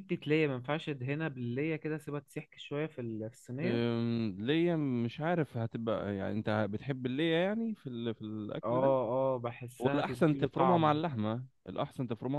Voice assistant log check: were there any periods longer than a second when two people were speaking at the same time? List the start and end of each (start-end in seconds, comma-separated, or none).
9.8-11.0